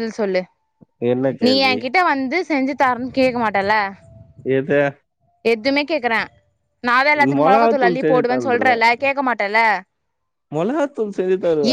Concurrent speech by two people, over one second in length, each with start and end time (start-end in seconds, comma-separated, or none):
7.4-8.8